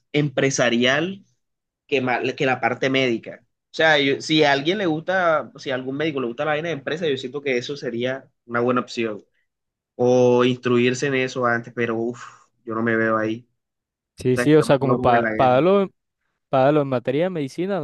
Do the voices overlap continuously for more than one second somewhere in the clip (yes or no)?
yes